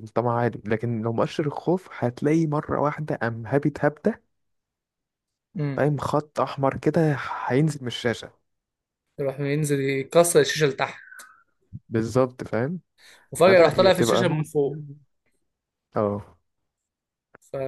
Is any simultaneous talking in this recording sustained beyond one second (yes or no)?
yes